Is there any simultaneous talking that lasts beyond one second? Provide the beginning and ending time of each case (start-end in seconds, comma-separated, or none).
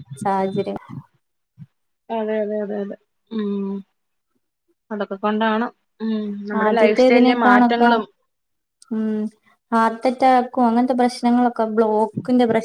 6.6-7.9